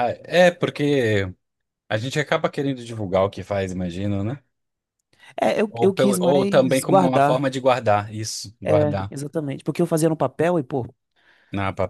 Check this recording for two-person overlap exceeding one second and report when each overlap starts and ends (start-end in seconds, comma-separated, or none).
5.7-7.5